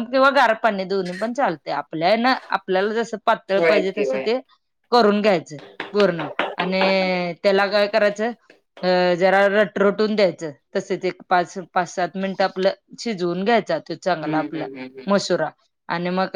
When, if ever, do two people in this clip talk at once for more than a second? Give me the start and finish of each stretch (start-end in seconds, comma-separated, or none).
none